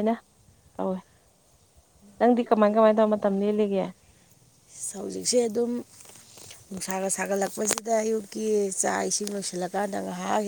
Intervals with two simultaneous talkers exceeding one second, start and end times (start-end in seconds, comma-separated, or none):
none